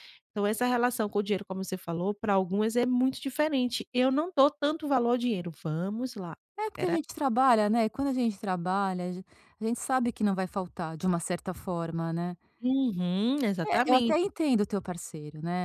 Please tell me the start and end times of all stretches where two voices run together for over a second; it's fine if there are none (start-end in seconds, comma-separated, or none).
none